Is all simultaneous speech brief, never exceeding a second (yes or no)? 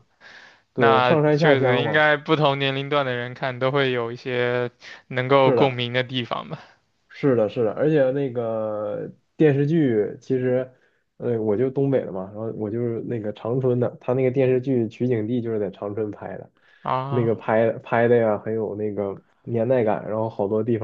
no